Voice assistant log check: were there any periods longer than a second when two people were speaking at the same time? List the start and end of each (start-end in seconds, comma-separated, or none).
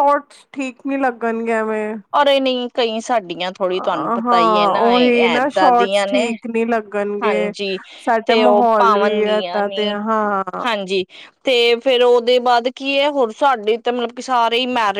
3.7-6.2, 8.3-10.0